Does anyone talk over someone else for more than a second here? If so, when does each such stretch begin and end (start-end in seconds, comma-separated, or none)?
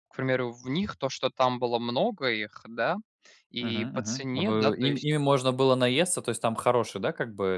3.6-5.2